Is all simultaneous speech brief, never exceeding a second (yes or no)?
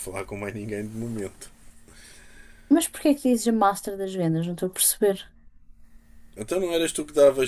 yes